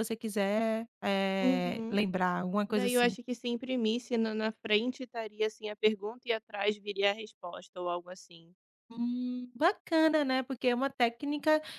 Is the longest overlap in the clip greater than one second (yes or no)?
no